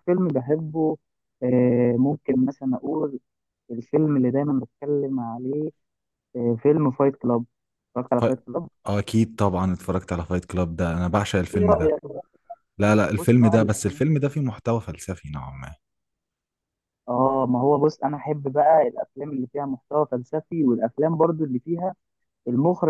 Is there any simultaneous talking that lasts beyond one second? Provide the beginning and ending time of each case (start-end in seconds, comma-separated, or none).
13.2-14.4